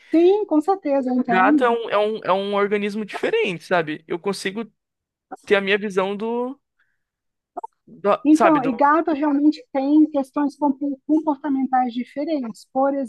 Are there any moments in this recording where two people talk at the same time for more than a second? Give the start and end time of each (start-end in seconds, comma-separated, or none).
none